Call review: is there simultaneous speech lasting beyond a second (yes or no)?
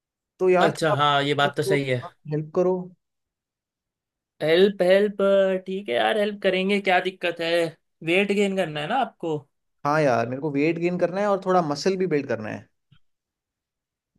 yes